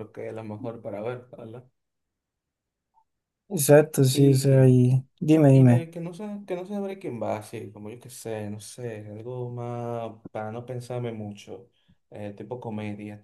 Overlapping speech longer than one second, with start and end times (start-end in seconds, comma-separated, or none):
none